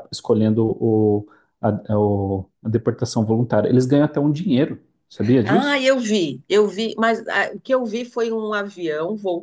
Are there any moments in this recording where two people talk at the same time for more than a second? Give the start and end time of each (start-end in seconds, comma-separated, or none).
none